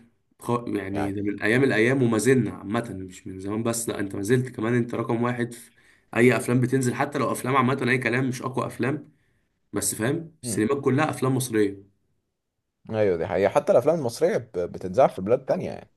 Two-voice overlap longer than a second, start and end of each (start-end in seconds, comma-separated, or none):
none